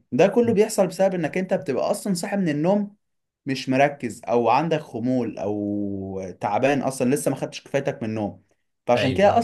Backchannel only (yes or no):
yes